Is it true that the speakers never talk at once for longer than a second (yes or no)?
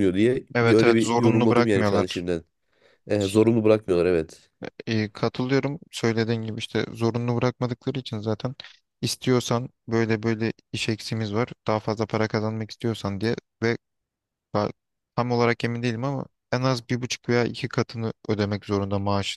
no